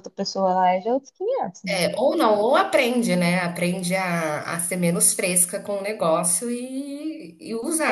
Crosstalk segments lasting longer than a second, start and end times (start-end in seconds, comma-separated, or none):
none